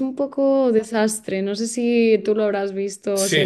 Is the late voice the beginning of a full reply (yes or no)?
yes